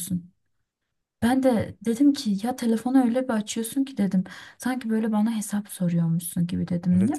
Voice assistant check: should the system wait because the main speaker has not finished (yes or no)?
no